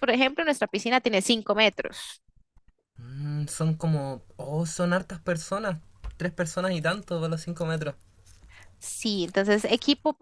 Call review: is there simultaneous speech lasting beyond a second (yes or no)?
no